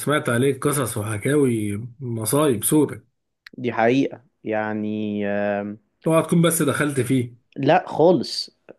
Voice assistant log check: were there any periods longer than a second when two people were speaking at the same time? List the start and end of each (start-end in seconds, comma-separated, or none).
none